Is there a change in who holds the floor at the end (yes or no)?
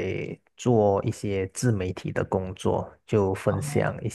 no